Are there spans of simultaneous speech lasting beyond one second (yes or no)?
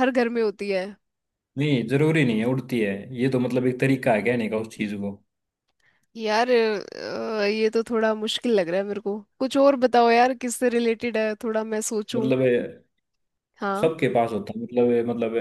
no